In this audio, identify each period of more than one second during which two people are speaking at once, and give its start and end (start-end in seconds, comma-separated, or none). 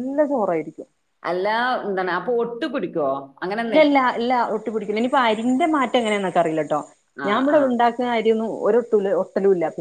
none